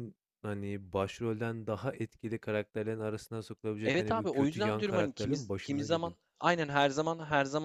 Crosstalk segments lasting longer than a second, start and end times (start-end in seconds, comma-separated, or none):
3.8-6.1